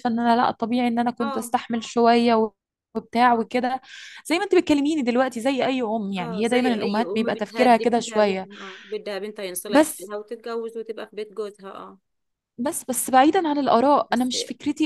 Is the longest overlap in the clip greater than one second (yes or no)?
yes